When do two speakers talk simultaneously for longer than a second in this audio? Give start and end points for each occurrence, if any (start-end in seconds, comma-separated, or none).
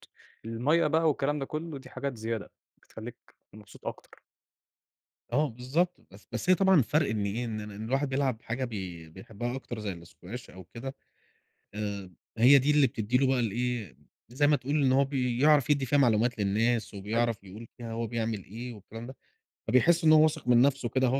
none